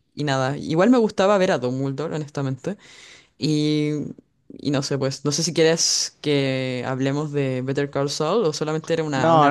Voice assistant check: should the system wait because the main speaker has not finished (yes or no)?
no